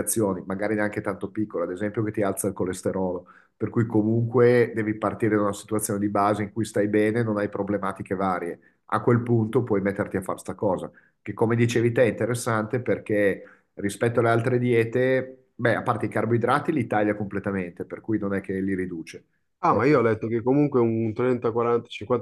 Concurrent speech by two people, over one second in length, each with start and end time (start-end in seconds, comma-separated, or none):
none